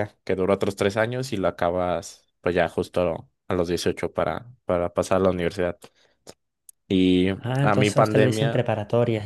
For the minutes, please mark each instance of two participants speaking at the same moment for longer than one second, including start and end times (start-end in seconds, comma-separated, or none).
7.4-8.6